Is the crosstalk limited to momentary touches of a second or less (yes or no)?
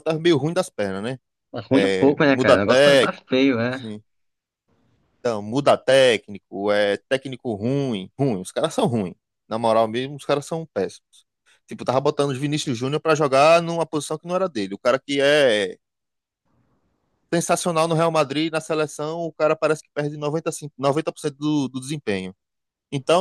no